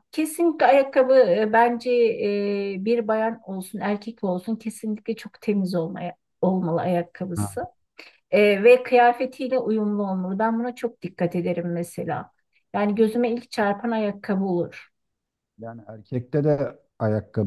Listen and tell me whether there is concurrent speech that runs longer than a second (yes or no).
no